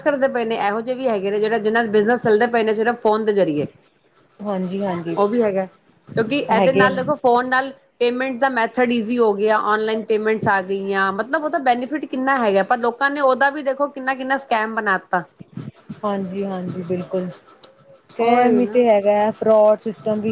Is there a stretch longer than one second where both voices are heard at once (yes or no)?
no